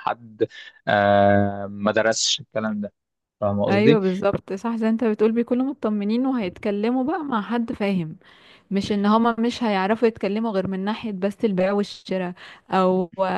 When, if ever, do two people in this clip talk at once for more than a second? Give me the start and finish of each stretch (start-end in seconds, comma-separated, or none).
none